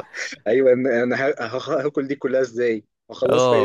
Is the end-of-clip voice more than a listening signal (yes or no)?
yes